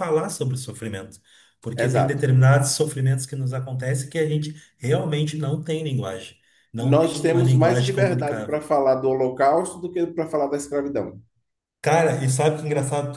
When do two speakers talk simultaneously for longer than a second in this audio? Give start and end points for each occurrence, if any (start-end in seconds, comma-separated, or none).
6.8-8.6